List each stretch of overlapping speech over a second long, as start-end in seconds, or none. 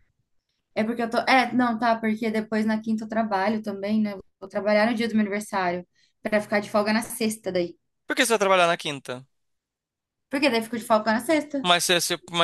none